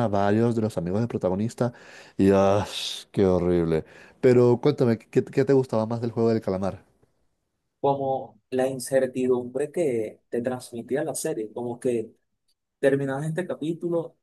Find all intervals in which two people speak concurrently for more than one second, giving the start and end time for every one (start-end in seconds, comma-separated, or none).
none